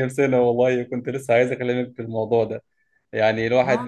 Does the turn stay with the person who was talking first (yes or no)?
yes